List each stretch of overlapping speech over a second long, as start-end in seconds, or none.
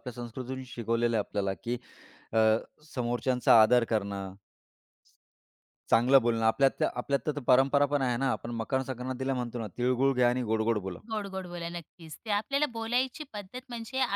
none